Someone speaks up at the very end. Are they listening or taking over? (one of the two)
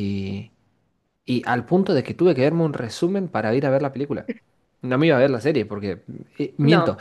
listening